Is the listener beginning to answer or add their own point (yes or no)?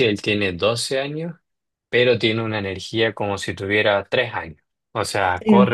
no